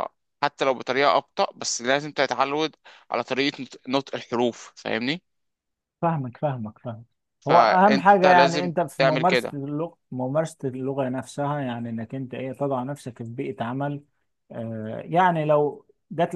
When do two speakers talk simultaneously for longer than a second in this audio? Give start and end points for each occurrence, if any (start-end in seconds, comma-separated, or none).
7.5-9.6